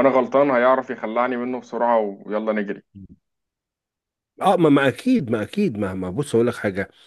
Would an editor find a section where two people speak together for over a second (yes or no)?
no